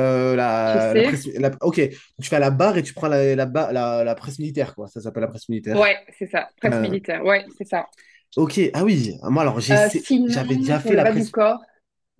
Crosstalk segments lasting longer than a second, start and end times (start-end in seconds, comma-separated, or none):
9.7-11.3